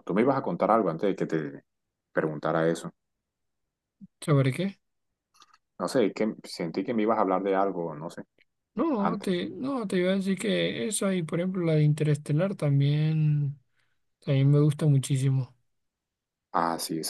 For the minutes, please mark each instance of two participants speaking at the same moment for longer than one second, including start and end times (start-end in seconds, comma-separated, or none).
none